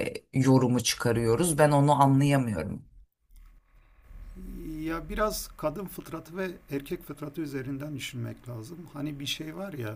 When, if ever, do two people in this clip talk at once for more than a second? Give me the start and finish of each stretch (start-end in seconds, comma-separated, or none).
none